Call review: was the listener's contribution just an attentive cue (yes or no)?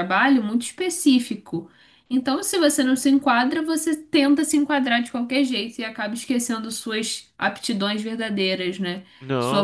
yes